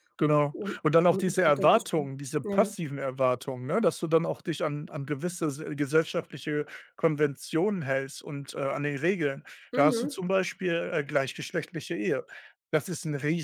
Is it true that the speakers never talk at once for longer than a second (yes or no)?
no